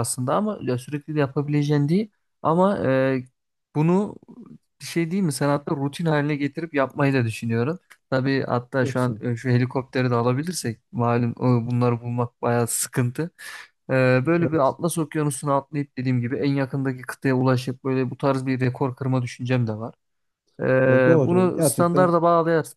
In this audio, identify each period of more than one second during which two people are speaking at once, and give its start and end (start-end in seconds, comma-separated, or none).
20.8-22.1